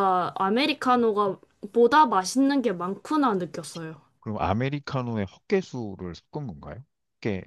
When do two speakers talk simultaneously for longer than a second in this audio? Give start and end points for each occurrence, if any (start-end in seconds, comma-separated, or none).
none